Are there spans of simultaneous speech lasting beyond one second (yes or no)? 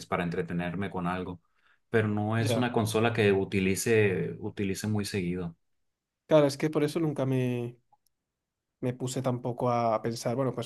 no